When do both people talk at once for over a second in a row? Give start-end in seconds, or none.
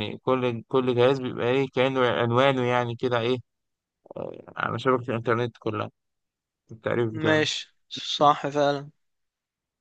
none